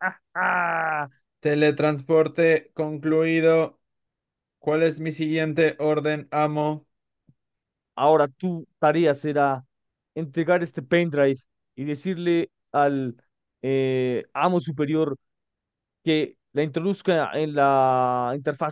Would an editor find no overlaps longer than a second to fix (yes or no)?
yes